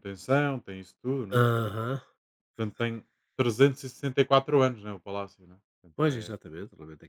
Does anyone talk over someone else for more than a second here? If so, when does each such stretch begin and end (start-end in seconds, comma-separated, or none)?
none